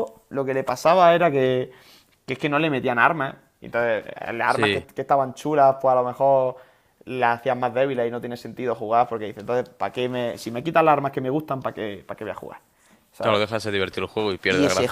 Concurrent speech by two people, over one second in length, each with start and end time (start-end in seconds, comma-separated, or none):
none